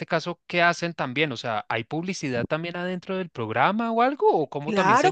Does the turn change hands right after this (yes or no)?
yes